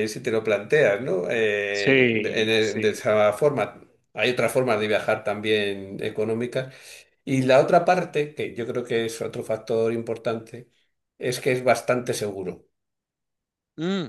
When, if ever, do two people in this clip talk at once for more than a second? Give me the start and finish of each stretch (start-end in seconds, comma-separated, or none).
1.7-3.0